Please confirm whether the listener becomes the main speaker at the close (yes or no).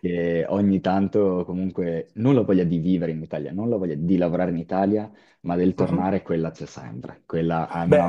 yes